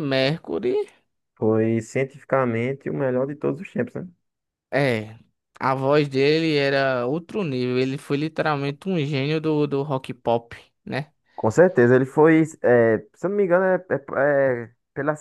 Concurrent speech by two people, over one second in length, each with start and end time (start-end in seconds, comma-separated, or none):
none